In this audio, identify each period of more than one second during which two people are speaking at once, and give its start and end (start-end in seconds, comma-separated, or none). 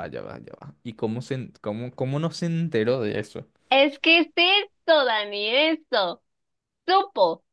none